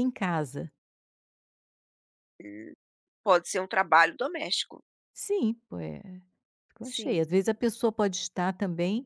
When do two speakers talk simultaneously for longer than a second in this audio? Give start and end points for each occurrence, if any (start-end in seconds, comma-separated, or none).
none